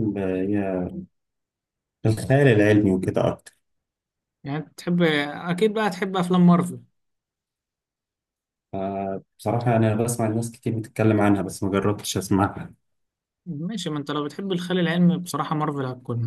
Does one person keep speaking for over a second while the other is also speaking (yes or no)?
no